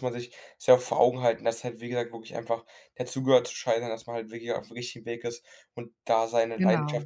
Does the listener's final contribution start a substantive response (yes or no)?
no